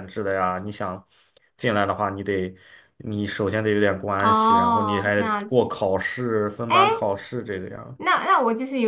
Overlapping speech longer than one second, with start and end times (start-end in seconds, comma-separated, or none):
4.2-5.7